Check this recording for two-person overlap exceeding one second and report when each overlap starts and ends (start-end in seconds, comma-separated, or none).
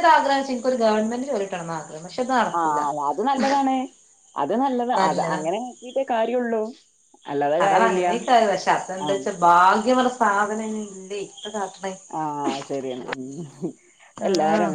none